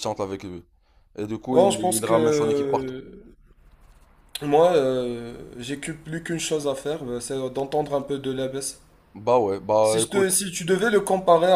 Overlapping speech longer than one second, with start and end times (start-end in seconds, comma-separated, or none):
1.5-2.9